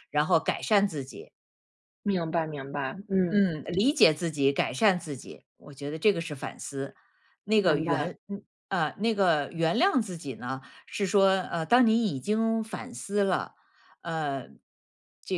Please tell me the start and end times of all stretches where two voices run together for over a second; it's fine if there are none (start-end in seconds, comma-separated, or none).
none